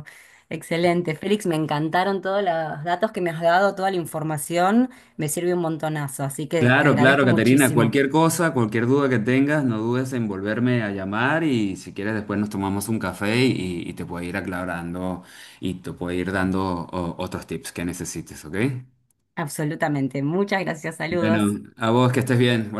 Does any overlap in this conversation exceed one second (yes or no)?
yes